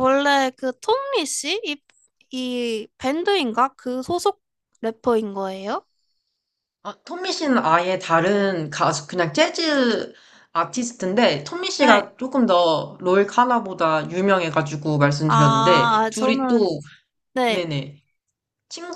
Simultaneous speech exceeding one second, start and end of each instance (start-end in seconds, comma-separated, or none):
15.3-16.7